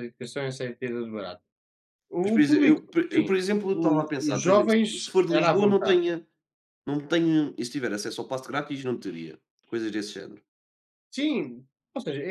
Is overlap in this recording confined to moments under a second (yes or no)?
no